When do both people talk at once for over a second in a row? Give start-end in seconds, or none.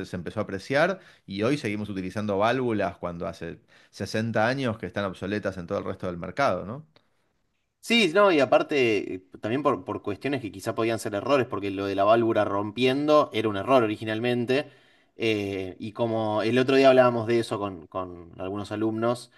none